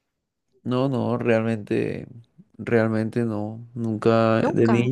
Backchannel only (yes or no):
yes